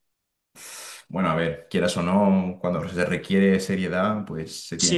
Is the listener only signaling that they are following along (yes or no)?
no